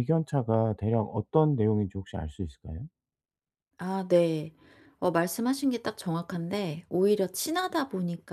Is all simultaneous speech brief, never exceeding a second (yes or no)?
yes